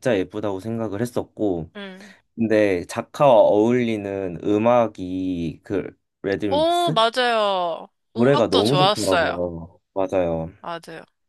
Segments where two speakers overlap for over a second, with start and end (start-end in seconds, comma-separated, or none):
8.1-9.4